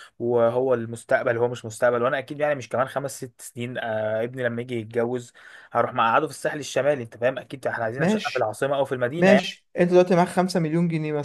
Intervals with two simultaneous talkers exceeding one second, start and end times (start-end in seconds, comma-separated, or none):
none